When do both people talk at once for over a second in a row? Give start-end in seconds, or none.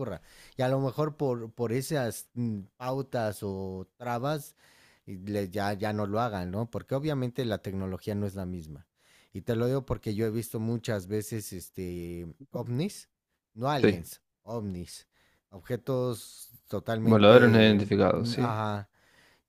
17.0-18.5